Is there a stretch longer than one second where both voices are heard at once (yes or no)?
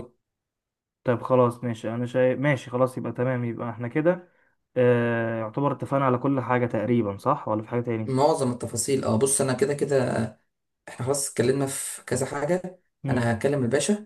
no